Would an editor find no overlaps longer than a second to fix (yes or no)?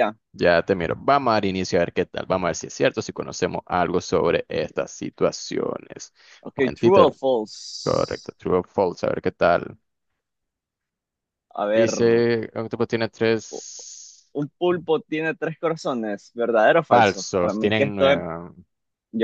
no